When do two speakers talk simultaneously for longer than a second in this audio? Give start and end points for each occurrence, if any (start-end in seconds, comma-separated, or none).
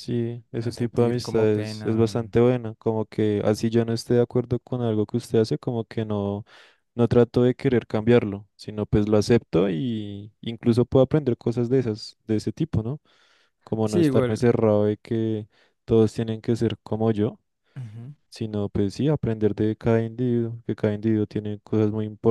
0.5-2.4